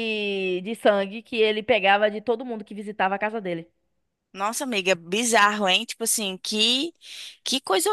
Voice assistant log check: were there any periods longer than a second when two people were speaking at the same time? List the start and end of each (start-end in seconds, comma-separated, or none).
none